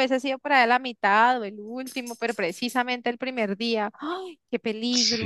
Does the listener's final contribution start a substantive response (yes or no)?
yes